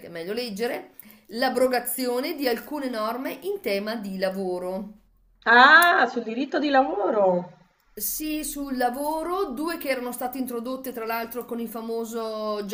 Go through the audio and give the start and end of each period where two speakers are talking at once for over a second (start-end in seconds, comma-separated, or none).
none